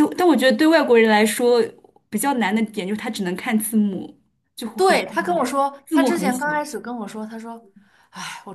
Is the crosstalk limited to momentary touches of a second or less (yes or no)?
no